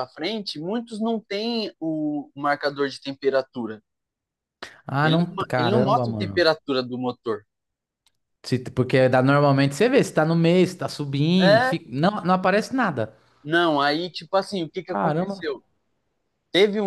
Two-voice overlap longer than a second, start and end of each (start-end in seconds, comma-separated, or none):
5.0-6.4